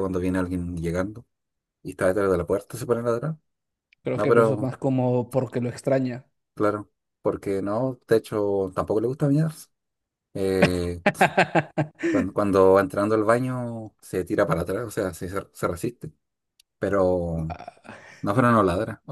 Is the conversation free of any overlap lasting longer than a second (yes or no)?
yes